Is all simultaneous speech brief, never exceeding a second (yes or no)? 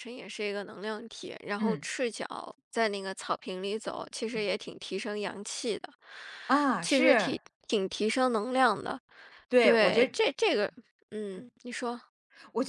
yes